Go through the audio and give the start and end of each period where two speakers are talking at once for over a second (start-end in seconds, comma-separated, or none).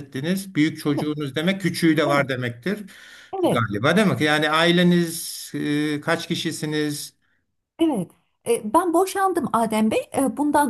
none